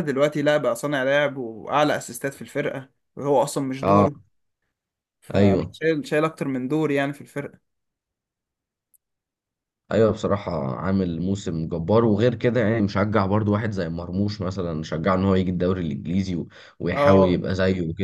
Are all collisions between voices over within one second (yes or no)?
yes